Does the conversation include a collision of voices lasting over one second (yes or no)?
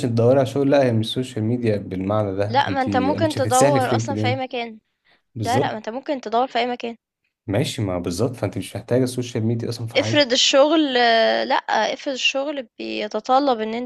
yes